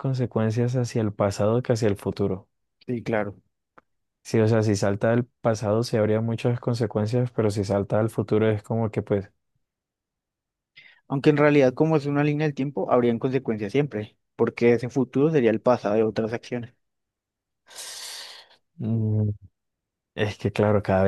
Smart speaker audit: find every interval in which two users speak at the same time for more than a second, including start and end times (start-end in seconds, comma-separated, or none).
none